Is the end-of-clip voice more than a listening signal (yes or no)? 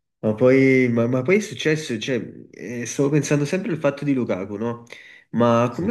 no